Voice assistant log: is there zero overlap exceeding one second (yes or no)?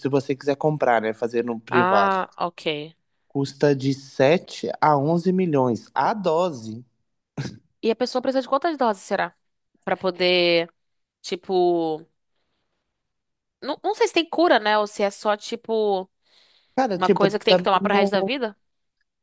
no